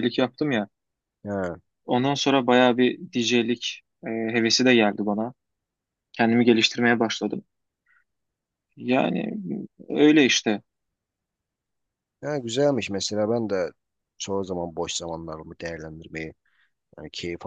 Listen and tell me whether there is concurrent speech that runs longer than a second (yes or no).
no